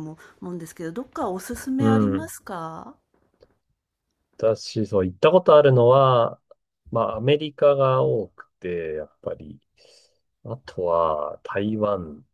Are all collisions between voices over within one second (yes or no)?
yes